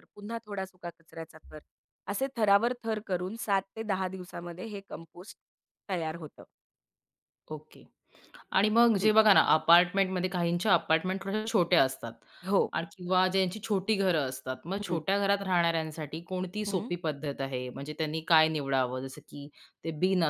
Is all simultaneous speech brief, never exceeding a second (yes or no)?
yes